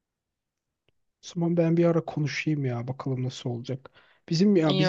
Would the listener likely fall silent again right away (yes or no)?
yes